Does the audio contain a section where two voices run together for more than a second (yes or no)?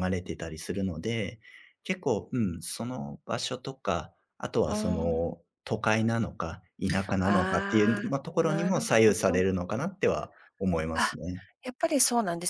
yes